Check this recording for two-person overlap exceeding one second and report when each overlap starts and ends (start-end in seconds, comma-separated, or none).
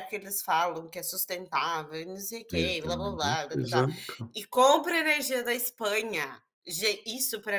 2.5-3.9